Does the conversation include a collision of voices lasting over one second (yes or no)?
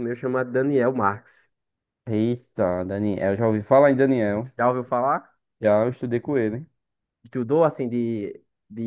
no